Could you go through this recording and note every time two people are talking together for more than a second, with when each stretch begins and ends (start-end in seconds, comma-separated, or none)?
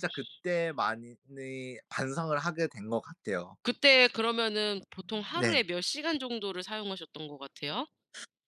none